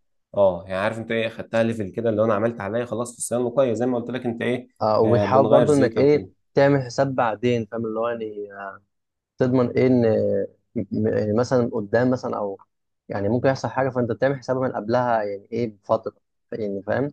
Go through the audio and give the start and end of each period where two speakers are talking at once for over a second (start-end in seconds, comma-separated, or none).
5.0-6.3